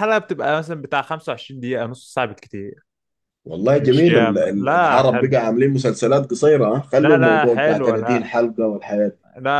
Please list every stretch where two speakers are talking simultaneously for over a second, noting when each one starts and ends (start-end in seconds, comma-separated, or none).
3.8-5.3, 7.0-8.3